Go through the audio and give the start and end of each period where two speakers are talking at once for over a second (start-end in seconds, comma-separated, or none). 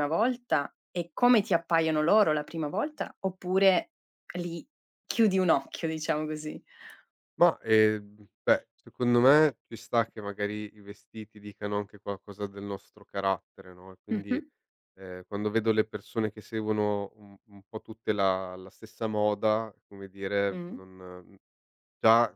none